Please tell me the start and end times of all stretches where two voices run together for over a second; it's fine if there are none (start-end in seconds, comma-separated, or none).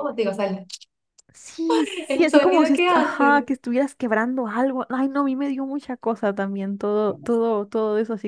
2.1-3.6